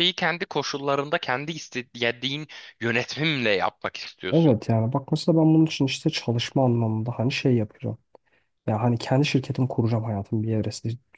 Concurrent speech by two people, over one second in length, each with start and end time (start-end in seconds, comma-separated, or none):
none